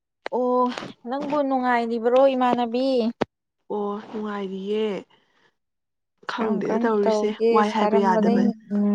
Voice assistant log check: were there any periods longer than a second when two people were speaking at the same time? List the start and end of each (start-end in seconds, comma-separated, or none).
6.3-8.4